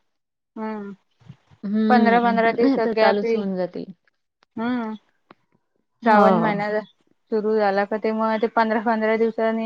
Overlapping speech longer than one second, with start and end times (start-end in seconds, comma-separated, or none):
1.9-3.4